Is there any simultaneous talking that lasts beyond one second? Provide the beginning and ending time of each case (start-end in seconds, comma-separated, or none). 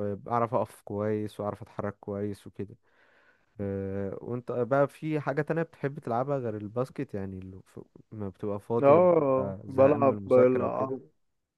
8.8-11.0